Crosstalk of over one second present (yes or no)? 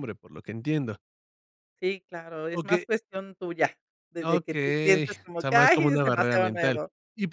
yes